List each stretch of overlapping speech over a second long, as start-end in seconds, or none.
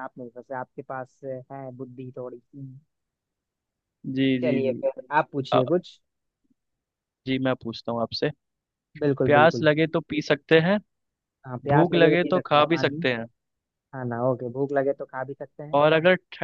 11.7-13.0